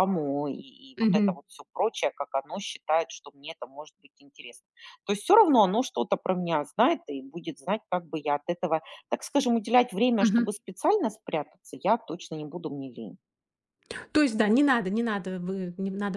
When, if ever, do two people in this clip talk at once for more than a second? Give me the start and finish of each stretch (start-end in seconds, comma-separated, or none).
none